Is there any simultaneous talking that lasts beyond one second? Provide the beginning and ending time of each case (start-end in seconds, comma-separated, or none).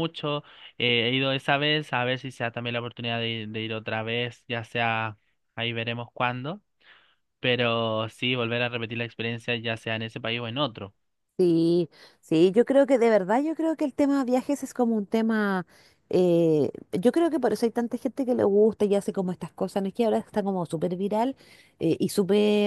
none